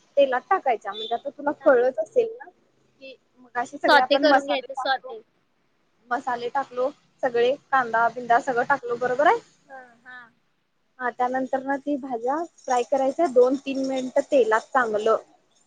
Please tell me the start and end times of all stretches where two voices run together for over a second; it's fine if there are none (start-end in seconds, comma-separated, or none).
3.8-5.2